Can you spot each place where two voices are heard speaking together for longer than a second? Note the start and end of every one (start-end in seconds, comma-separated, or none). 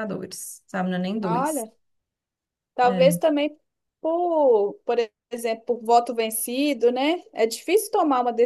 none